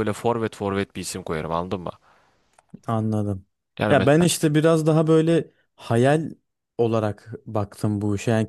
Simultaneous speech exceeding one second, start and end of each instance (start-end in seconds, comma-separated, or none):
none